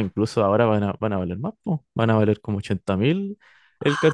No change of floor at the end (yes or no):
no